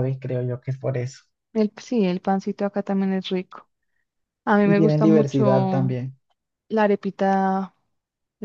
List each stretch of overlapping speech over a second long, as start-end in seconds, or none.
4.6-6.0